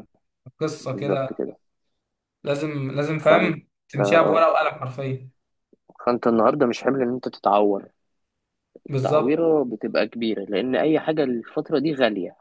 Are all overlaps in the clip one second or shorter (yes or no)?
no